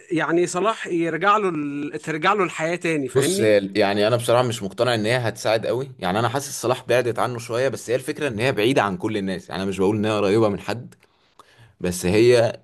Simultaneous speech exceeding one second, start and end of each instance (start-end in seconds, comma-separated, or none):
none